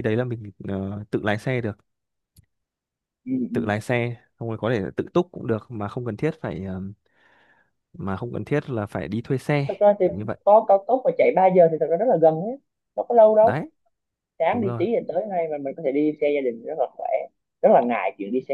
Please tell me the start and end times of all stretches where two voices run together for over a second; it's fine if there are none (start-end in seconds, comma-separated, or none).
none